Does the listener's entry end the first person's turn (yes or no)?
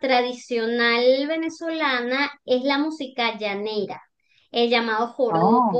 no